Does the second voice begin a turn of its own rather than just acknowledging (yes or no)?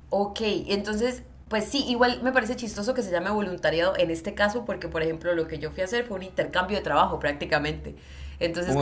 no